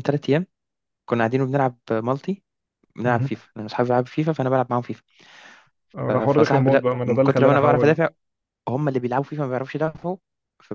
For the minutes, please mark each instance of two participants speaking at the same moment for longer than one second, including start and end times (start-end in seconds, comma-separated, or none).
6.1-8.0